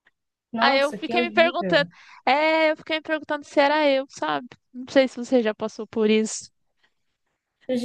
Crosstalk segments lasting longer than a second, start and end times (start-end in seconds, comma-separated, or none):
0.6-1.9